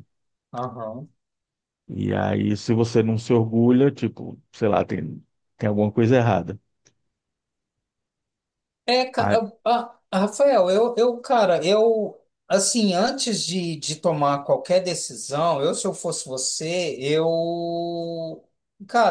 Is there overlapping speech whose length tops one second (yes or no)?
no